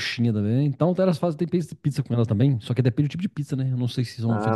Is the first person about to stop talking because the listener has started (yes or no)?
yes